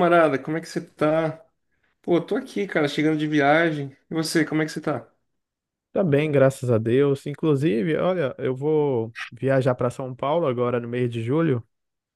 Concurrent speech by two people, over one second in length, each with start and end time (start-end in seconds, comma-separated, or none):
none